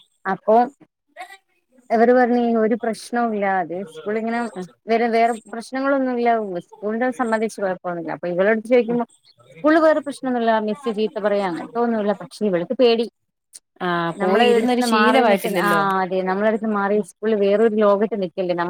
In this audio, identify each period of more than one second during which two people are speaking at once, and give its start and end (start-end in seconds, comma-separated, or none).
14.2-15.7